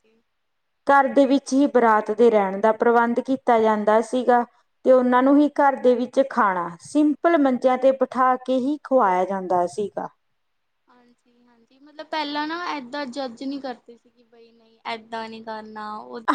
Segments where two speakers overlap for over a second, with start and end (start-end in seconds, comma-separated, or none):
none